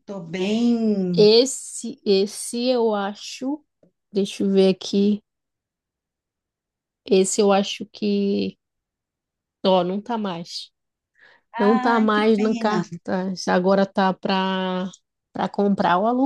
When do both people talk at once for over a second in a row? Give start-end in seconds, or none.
11.6-12.8